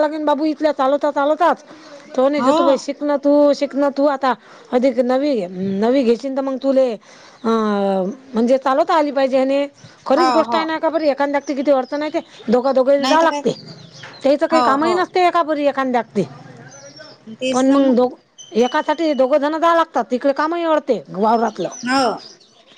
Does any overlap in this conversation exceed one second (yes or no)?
no